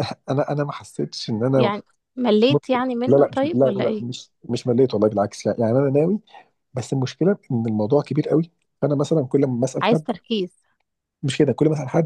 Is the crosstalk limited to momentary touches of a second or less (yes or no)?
no